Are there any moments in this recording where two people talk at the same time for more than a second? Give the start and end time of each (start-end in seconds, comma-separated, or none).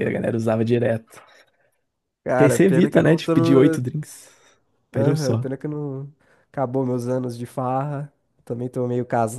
2.4-3.8